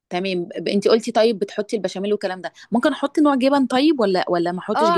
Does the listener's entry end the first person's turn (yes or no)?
yes